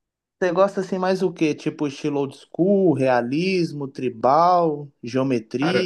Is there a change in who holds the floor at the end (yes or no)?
no